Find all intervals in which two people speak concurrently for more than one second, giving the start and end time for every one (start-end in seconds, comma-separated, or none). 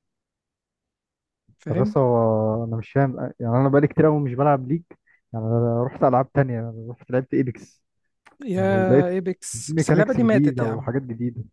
9.5-10.9